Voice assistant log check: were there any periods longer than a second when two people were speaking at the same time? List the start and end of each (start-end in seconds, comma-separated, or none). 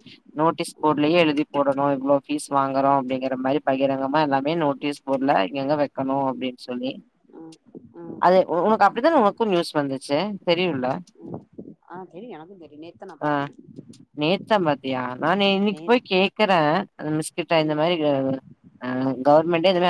none